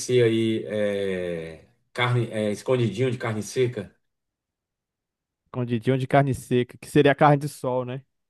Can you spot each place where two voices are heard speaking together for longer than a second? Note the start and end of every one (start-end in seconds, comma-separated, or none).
none